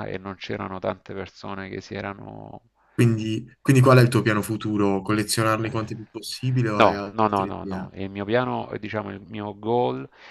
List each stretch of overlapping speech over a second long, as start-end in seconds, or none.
6.7-8.0